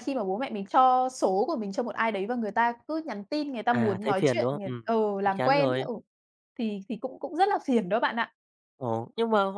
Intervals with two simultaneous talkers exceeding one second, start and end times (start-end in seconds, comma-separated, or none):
3.7-5.9